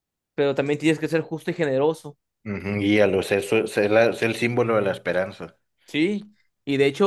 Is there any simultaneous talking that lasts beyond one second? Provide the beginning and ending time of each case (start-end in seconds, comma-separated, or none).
none